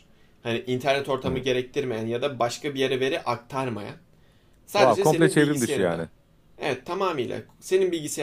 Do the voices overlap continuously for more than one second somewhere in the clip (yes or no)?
yes